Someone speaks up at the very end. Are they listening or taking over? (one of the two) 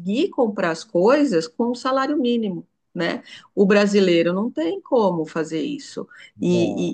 listening